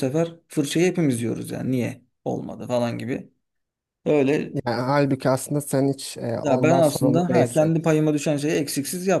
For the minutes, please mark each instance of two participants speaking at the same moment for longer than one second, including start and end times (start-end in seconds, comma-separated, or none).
6.4-7.8